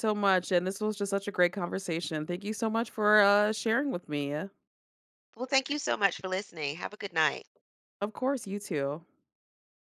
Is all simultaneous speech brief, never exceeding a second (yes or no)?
yes